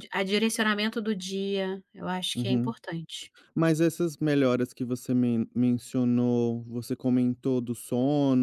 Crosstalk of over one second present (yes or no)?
no